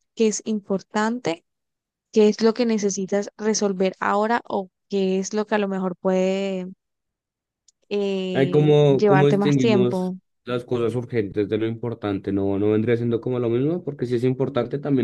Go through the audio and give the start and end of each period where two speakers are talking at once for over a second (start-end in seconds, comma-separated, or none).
8.3-10.1